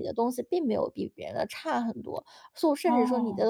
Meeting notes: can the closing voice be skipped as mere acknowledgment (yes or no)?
yes